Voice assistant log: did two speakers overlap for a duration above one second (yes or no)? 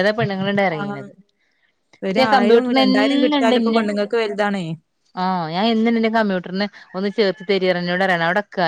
yes